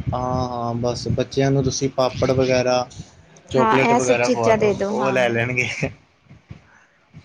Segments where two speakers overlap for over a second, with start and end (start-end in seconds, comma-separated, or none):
3.6-5.2